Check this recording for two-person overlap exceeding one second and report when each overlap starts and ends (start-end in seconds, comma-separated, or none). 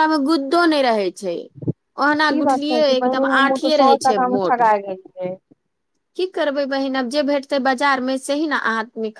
2.4-4.7